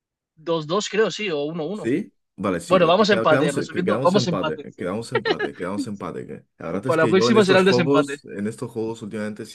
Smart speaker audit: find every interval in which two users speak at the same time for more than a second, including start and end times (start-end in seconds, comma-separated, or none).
2.7-4.7, 6.8-8.2